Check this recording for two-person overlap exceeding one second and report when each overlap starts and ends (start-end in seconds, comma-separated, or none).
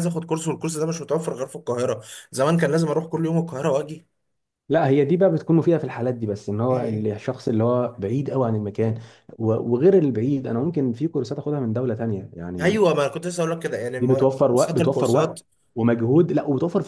14.0-15.4